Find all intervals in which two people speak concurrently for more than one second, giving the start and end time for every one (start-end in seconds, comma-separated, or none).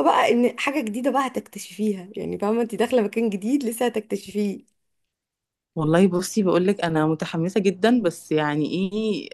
none